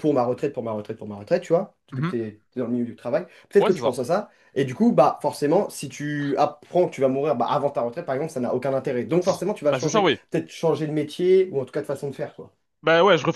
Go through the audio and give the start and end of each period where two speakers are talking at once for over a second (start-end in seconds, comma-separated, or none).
none